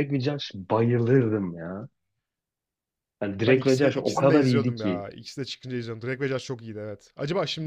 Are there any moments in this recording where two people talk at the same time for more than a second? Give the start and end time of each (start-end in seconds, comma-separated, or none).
3.5-5.0